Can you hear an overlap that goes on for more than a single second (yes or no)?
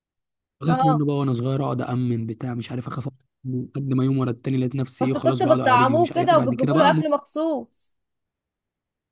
yes